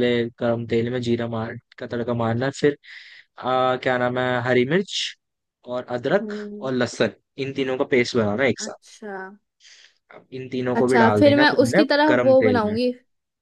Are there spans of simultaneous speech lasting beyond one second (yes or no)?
yes